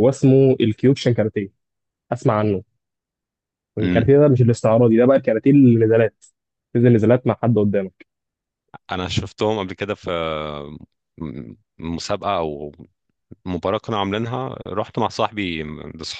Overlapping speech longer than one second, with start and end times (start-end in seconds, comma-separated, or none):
none